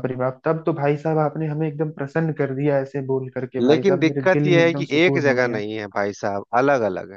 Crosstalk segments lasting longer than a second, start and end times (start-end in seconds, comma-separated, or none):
3.6-5.6